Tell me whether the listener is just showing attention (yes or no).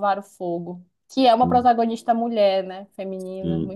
no